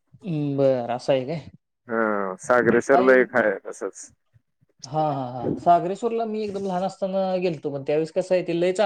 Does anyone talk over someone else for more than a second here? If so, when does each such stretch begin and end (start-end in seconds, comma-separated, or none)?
none